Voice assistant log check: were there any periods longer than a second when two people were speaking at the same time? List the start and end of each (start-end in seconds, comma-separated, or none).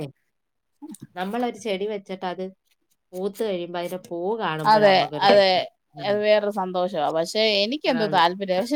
none